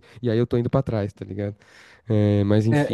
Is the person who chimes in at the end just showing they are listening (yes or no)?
no